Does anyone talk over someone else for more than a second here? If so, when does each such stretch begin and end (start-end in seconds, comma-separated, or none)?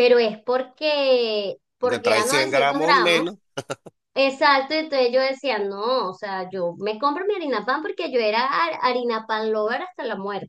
1.8-3.4